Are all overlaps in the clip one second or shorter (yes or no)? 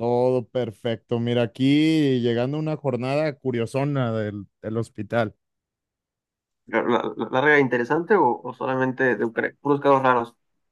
yes